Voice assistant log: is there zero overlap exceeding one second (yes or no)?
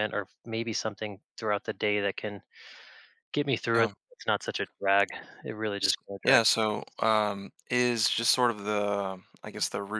yes